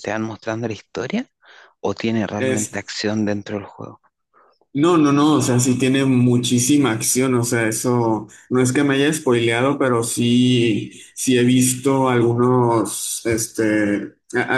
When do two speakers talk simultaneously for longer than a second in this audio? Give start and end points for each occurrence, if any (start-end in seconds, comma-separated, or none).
none